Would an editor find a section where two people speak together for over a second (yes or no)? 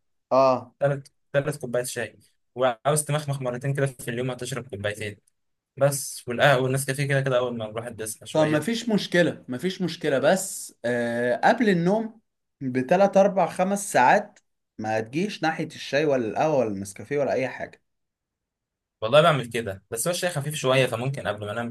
no